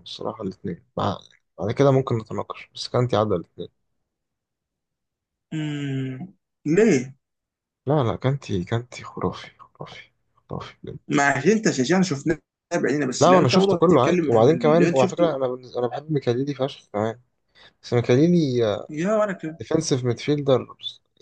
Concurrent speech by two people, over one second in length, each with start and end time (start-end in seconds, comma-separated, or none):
13.2-15.4